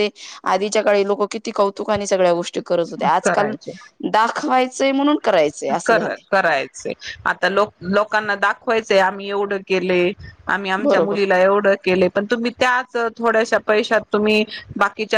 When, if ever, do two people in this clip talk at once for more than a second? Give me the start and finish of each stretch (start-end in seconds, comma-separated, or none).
none